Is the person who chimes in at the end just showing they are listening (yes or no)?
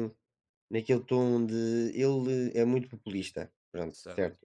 yes